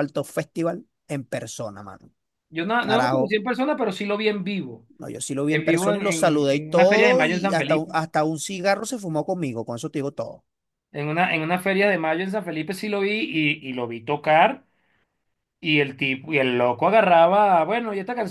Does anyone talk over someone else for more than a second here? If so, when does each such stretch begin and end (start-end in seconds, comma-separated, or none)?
5.5-7.9